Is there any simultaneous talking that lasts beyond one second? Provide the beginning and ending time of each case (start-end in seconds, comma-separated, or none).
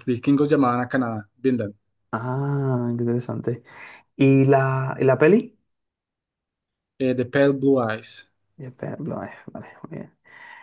none